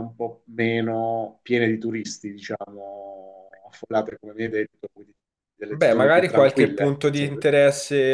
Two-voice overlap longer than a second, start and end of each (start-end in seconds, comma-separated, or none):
5.7-7.4